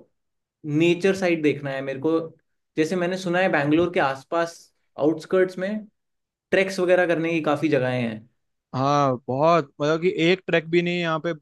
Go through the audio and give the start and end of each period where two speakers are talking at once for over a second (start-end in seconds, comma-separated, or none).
none